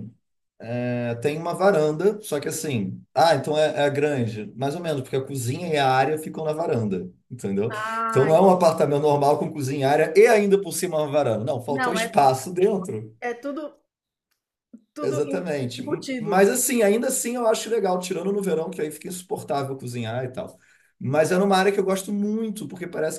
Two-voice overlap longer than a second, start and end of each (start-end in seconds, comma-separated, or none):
15.0-16.5